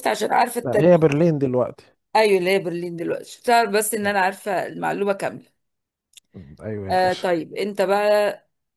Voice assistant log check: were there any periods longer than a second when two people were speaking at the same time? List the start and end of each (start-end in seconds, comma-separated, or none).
none